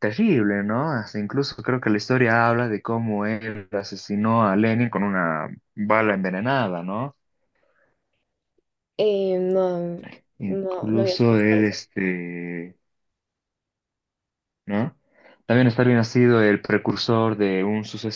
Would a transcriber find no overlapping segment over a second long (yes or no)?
no